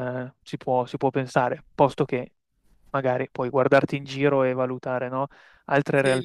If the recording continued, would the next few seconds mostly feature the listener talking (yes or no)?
yes